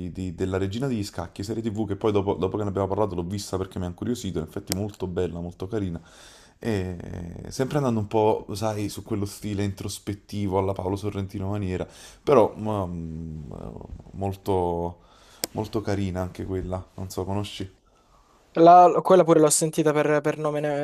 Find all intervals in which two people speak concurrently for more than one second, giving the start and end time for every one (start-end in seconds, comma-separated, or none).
none